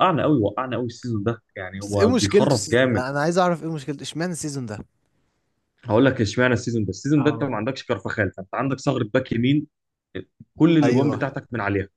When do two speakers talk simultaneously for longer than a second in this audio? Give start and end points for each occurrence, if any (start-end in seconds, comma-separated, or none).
1.8-3.1